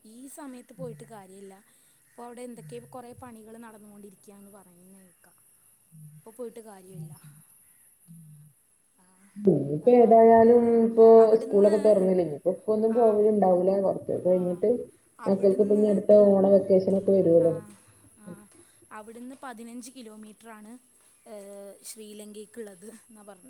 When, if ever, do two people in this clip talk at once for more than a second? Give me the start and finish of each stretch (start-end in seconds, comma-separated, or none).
none